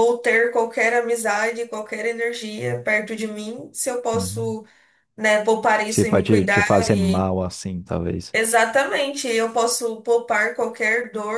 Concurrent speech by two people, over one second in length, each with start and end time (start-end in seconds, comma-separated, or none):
5.9-7.3